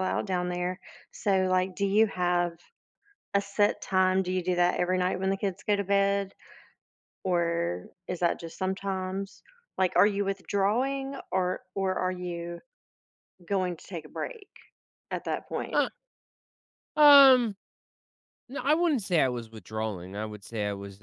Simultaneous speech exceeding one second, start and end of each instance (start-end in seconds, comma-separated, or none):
none